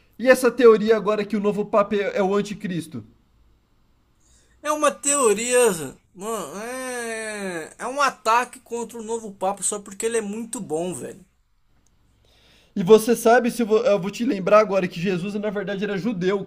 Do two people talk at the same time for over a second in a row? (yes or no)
no